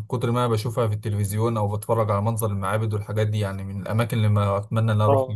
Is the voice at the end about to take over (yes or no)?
yes